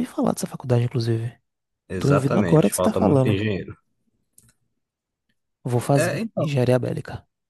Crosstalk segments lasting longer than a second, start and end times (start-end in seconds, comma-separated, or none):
2.0-3.4